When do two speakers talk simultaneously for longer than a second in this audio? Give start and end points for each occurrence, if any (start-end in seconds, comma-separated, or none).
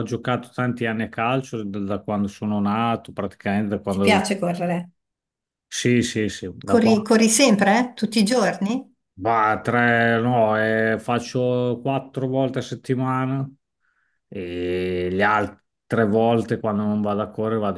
none